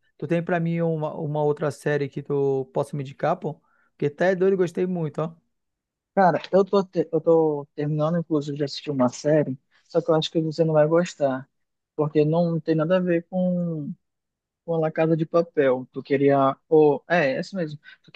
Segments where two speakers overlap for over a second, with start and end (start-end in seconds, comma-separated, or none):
none